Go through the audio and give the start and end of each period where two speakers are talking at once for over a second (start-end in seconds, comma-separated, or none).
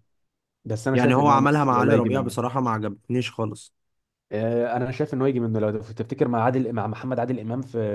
0.9-2.3